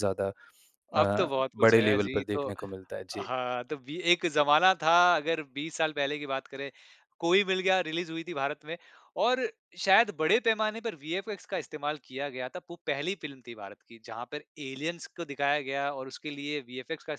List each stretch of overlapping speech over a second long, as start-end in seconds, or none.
1.0-2.5